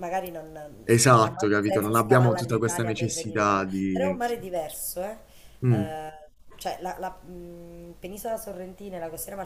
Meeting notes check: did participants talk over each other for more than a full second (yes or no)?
yes